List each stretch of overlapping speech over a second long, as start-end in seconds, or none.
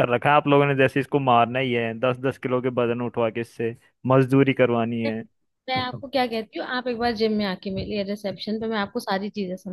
none